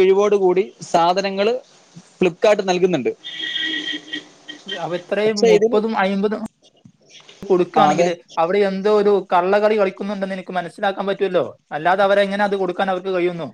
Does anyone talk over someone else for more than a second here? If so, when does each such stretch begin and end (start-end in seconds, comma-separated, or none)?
none